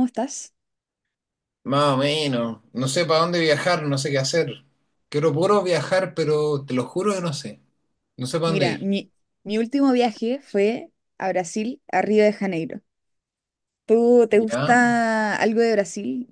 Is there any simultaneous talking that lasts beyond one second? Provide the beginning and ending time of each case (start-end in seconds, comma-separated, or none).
none